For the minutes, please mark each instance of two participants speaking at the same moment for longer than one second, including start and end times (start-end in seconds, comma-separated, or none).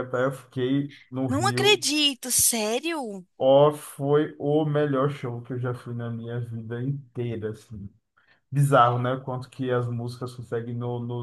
none